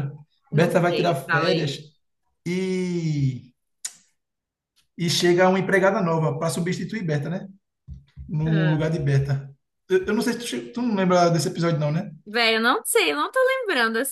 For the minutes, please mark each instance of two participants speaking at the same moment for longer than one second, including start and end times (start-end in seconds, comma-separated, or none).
0.5-1.8